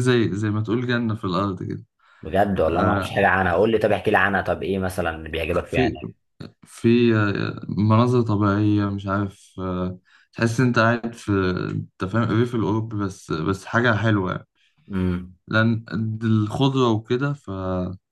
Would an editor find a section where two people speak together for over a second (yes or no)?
no